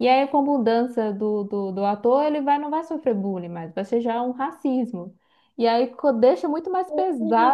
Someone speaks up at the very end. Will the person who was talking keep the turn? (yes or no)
no